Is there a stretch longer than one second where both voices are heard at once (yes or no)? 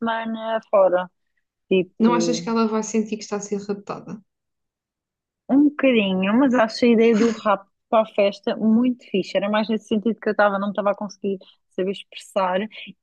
no